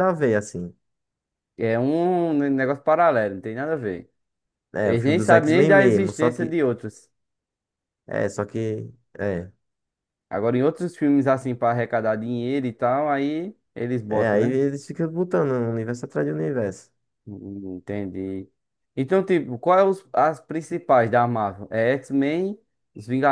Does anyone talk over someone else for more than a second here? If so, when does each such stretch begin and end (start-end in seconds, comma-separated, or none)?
4.8-6.6